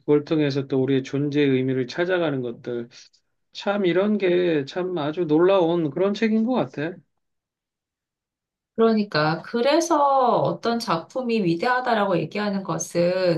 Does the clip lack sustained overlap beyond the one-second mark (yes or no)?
yes